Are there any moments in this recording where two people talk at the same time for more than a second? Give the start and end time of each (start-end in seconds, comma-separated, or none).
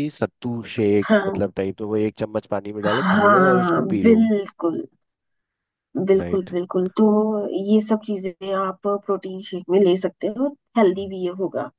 2.8-4.2